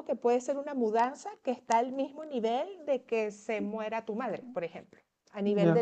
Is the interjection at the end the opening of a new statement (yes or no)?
yes